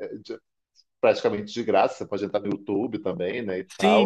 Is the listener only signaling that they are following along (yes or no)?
no